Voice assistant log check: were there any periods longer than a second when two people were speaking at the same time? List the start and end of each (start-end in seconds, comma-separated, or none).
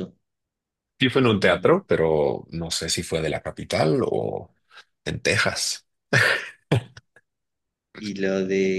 none